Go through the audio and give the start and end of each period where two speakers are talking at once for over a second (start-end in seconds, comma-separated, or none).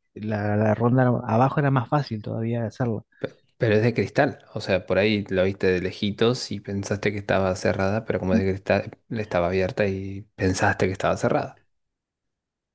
none